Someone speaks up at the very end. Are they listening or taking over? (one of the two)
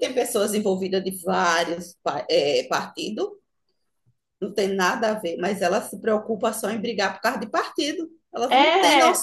taking over